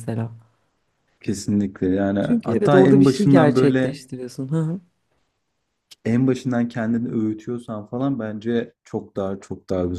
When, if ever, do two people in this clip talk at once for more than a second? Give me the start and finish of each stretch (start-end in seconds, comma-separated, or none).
2.2-4.0